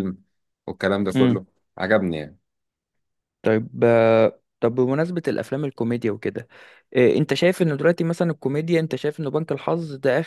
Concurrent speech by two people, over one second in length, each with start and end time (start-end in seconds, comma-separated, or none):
none